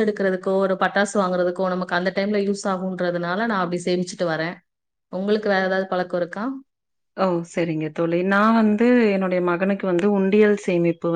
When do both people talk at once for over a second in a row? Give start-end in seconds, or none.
none